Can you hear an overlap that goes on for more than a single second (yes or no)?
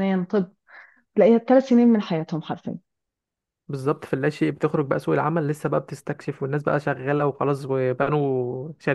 no